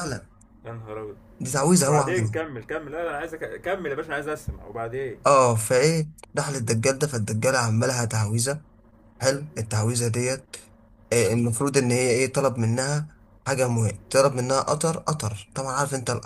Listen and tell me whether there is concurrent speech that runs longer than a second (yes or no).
no